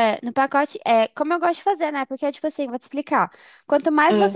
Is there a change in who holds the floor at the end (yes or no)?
no